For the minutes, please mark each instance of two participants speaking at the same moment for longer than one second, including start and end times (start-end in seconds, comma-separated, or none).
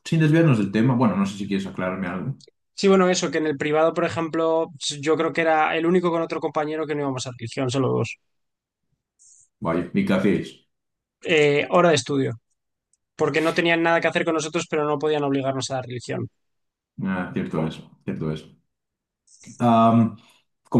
none